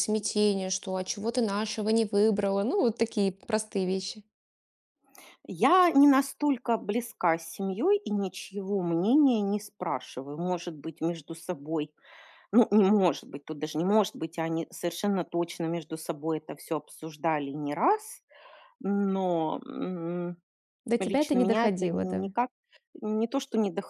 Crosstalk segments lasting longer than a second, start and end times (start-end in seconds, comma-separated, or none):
21.0-22.3